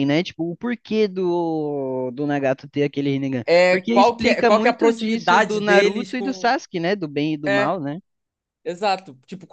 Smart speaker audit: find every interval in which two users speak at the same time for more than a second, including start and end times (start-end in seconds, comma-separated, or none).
3.5-6.5